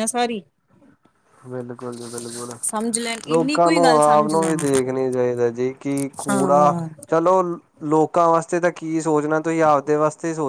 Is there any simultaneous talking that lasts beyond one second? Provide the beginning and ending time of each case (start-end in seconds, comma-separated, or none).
3.3-4.6